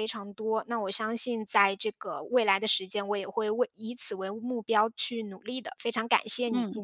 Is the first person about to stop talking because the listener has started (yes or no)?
yes